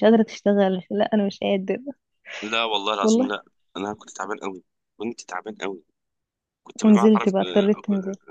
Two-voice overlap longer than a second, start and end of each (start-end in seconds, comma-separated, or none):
none